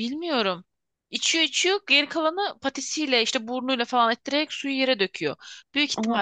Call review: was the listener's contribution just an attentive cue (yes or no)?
yes